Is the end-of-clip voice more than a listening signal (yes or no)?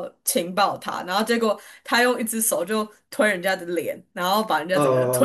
yes